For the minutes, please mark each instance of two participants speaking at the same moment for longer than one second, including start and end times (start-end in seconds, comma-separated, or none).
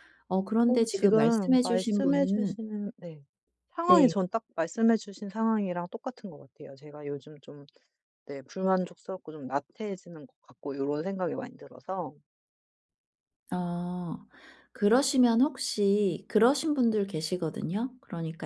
0.7-2.5